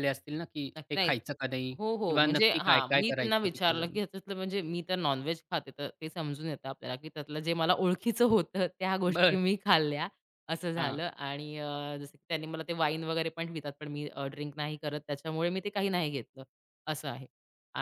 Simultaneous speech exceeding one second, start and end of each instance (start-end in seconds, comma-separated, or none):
1.8-4.0